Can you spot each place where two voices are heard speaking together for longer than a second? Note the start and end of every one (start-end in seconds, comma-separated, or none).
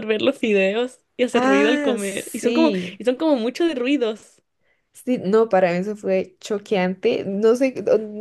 1.3-3.0